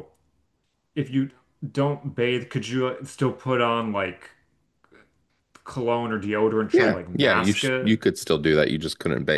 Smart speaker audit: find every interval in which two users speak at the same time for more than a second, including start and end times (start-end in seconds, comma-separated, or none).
6.7-8.0